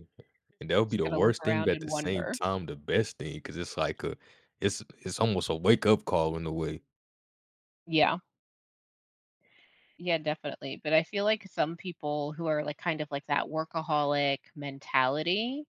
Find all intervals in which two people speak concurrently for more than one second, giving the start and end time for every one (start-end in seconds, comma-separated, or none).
0.9-2.4